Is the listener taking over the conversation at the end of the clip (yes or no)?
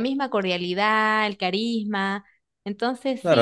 yes